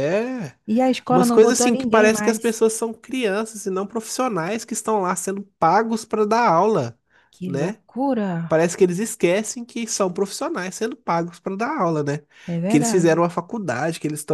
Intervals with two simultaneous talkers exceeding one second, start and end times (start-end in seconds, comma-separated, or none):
1.1-2.6